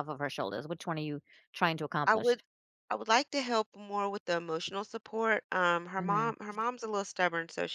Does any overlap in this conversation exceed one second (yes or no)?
no